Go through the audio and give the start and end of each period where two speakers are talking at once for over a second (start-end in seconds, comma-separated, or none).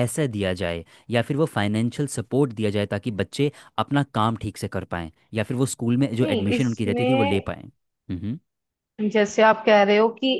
6.2-7.5